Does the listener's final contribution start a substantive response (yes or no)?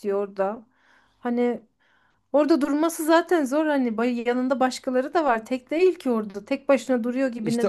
yes